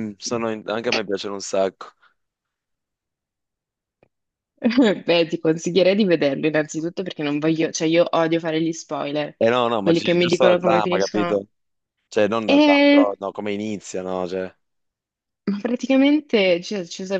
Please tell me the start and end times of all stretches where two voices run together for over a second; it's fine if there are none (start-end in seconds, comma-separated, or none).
9.8-11.4